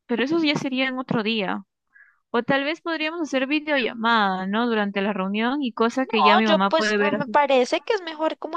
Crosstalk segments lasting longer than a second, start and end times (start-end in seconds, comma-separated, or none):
6.0-7.4